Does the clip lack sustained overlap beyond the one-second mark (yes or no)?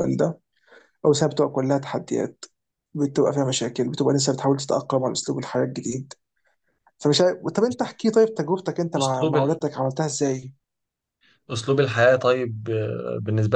yes